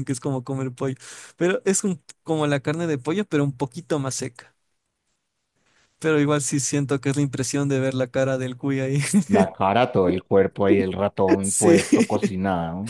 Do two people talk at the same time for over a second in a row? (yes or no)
no